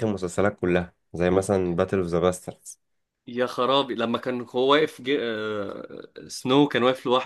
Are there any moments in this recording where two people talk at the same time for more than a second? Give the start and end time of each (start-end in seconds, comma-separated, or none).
none